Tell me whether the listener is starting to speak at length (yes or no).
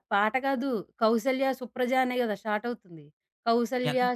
no